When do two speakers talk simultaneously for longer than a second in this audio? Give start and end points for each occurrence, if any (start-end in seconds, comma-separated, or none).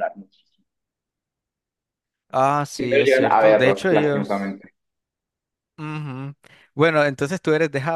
2.8-4.6